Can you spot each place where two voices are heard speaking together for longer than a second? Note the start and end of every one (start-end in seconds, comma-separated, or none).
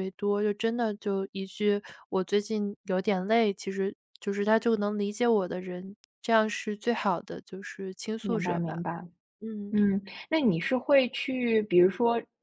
none